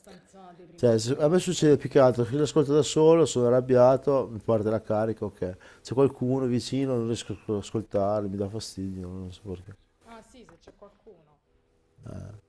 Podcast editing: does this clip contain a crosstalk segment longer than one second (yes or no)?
yes